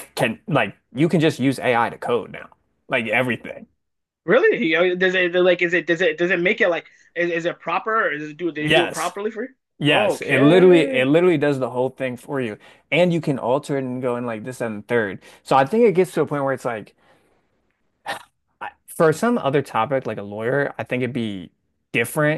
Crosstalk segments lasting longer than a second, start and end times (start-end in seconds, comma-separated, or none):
9.8-11.1